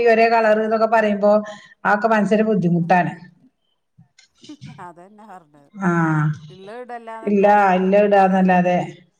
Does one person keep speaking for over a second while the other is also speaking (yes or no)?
no